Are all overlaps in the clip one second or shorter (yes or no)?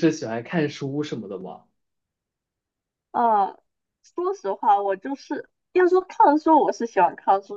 yes